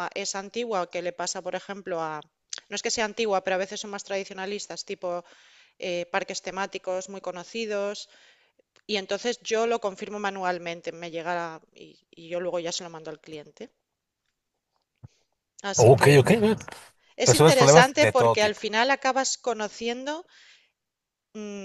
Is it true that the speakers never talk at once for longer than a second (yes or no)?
no